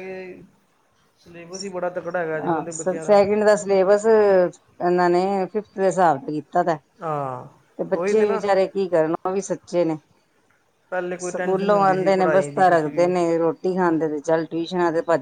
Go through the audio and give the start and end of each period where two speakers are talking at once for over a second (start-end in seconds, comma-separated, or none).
11.3-13.1